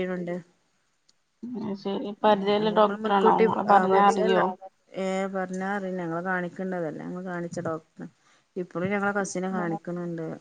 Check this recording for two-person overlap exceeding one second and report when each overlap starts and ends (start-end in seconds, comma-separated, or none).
2.3-4.4